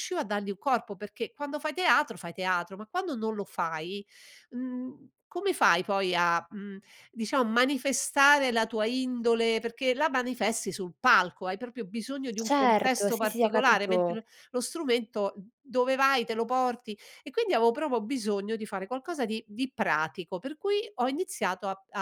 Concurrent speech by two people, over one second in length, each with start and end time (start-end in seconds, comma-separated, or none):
12.4-14.2